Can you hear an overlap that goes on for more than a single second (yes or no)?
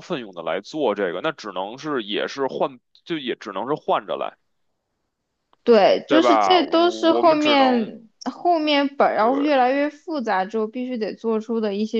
yes